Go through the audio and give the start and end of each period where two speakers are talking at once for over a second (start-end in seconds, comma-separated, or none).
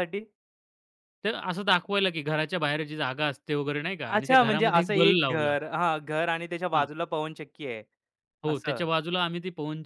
4.1-5.5